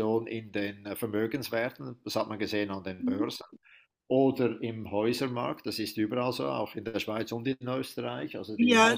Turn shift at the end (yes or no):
yes